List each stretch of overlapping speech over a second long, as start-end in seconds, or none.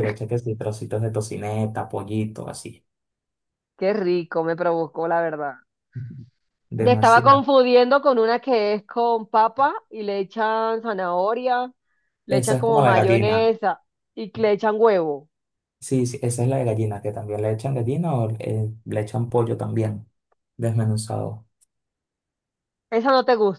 12.3-13.5